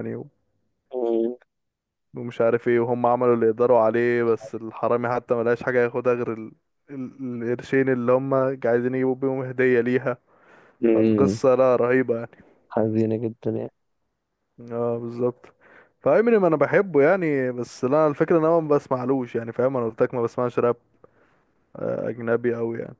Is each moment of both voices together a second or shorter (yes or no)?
yes